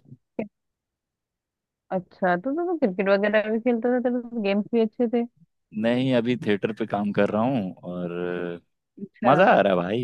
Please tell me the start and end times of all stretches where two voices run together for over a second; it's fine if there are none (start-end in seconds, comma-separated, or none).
none